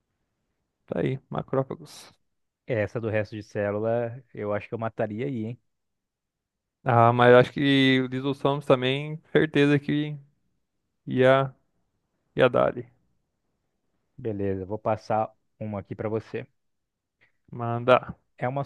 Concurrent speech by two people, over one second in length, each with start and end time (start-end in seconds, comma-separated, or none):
none